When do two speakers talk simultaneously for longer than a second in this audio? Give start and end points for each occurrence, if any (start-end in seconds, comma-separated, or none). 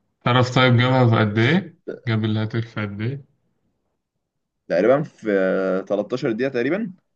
none